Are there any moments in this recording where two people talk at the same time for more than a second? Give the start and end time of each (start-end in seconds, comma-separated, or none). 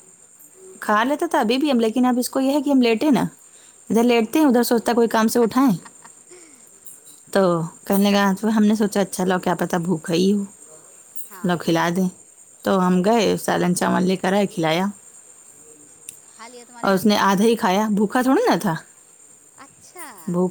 none